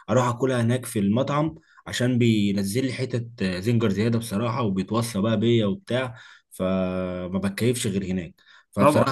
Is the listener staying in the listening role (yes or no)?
no